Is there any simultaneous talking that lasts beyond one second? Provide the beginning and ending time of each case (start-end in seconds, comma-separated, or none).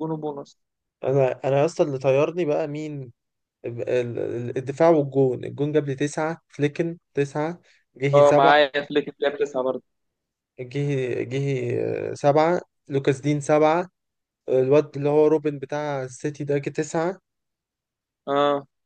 none